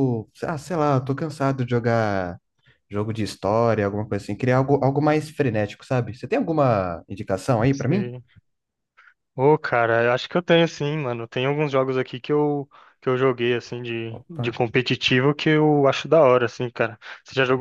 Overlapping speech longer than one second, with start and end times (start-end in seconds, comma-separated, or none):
none